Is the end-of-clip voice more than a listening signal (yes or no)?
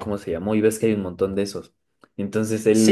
no